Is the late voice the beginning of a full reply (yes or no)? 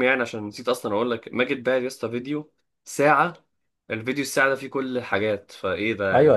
yes